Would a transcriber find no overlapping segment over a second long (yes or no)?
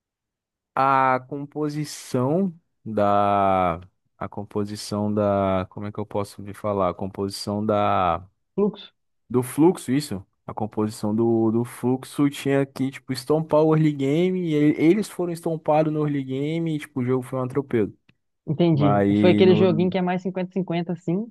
no